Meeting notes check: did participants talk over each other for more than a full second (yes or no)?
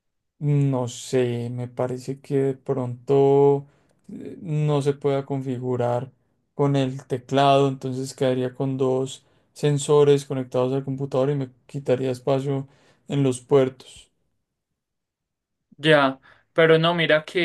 no